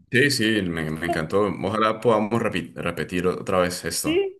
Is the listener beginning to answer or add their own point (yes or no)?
yes